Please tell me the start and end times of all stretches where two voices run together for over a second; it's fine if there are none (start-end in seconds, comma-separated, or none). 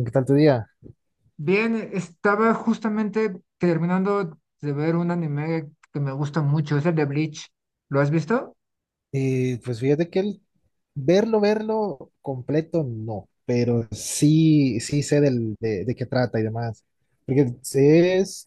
none